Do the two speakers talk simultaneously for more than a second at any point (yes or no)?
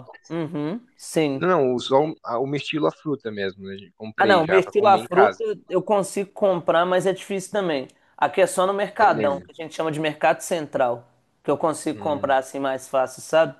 yes